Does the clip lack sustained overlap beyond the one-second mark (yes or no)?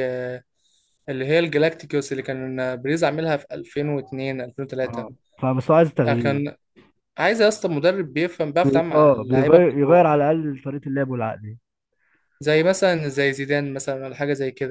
no